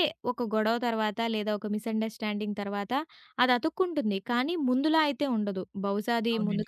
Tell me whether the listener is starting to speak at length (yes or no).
no